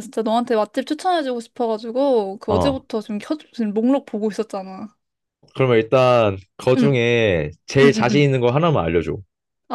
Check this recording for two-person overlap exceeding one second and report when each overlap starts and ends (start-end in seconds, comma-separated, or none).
none